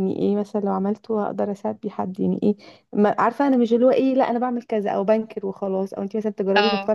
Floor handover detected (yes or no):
no